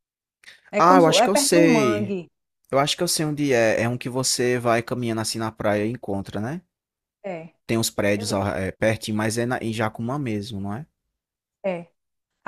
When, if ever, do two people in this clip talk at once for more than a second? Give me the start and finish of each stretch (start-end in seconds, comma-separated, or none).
0.8-2.2